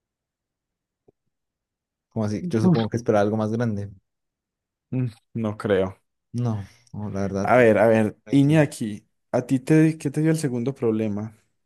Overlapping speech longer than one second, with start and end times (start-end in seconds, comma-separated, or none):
none